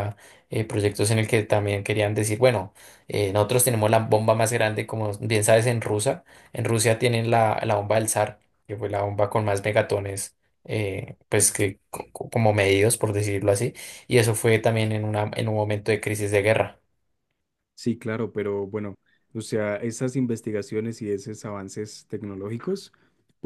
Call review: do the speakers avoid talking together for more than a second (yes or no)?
yes